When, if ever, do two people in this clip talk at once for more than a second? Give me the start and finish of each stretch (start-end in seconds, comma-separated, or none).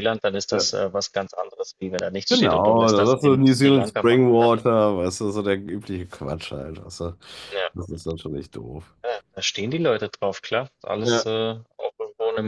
2.3-4.5